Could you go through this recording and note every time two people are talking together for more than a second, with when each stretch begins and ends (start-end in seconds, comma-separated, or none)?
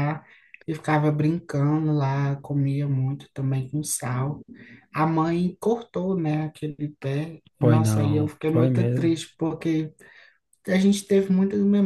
7.6-9.1